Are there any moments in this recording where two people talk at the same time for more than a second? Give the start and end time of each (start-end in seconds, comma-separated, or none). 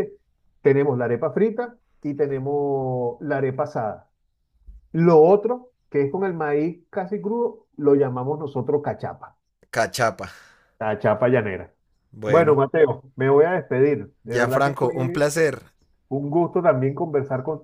none